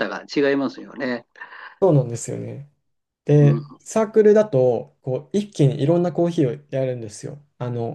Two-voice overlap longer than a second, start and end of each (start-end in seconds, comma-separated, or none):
none